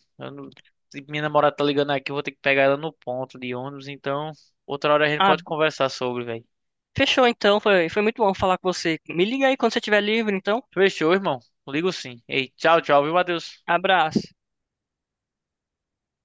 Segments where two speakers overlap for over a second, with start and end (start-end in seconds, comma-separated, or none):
none